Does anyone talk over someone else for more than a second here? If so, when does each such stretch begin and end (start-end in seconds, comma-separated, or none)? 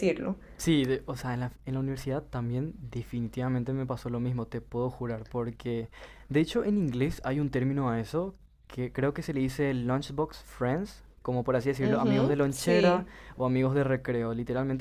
11.8-13.1